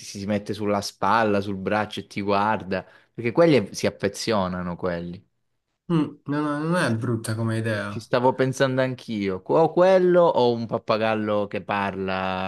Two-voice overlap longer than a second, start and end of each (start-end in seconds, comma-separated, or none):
none